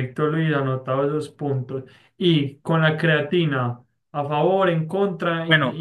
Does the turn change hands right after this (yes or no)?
yes